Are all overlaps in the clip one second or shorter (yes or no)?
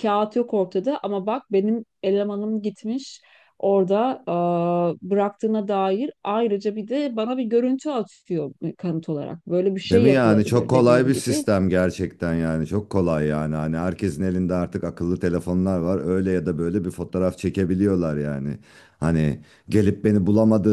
no